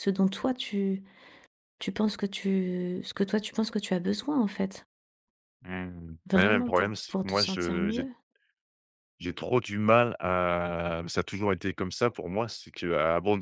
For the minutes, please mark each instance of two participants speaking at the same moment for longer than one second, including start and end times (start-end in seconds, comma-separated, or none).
6.3-8.1